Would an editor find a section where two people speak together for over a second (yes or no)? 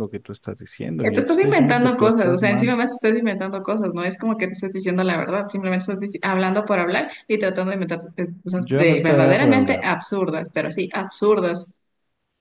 yes